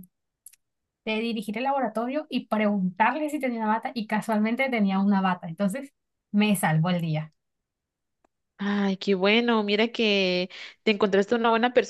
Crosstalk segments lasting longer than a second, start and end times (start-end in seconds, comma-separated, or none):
none